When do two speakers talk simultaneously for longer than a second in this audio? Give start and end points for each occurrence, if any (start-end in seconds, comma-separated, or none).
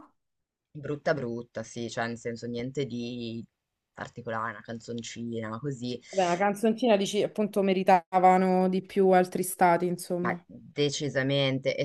none